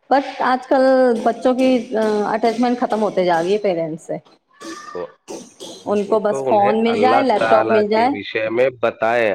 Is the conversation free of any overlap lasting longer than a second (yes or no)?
no